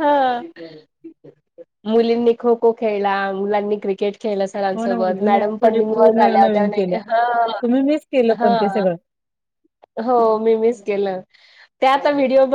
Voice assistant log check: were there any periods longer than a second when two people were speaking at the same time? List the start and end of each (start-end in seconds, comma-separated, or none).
4.8-6.7